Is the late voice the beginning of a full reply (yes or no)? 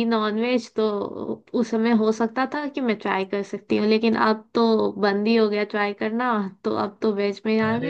yes